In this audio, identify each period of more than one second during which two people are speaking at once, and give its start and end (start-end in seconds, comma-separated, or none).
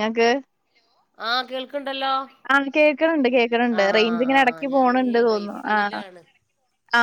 3.8-5.8